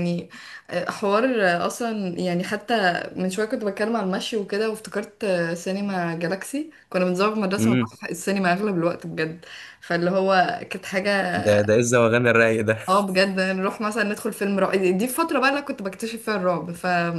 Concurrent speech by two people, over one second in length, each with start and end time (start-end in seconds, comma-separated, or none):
none